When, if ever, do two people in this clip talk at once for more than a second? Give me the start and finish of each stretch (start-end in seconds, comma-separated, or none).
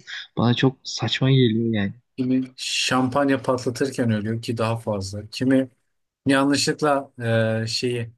none